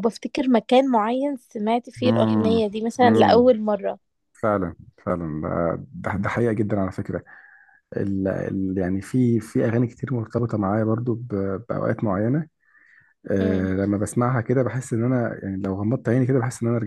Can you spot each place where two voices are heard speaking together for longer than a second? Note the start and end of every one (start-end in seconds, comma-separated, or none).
2.0-3.5